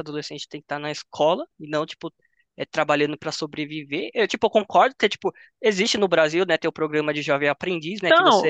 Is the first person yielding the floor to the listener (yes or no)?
yes